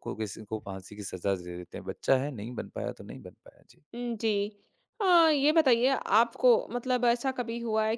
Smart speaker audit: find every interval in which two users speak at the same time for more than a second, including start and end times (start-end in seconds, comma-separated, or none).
none